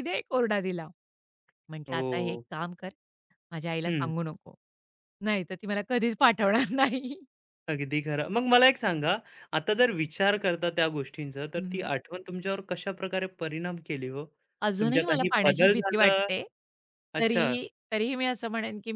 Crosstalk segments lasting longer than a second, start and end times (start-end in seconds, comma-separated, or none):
14.8-16.1